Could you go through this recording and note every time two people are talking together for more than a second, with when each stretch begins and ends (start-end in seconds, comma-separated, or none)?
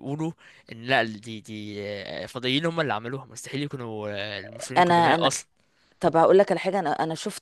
none